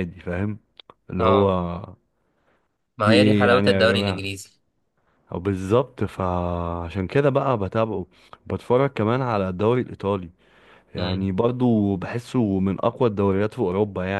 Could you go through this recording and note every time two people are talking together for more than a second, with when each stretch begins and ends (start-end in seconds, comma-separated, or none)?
3.0-4.2